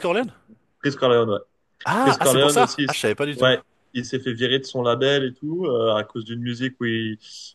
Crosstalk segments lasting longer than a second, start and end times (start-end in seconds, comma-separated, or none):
2.0-3.5